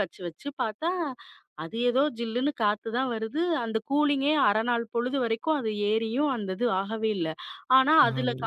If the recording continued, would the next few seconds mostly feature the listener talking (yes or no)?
no